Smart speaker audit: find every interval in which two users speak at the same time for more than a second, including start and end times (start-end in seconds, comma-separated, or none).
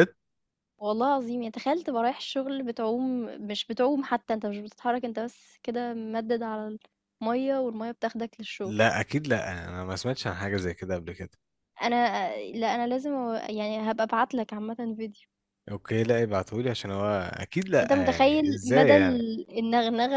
17.7-19.2